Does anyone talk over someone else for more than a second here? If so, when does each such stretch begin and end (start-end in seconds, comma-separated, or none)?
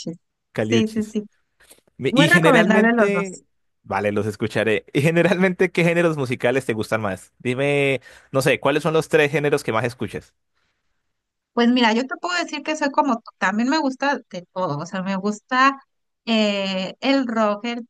2.1-3.4